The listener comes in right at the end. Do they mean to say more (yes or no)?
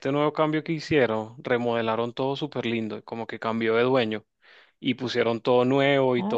no